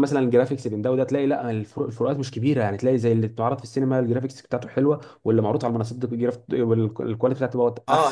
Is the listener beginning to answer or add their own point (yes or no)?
yes